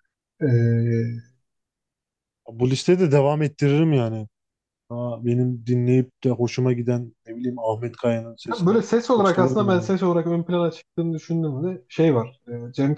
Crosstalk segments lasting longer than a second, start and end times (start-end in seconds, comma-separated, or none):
8.5-9.9